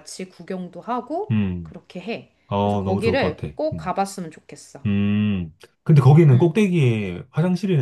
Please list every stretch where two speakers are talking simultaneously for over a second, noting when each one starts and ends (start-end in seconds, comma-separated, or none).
2.5-4.0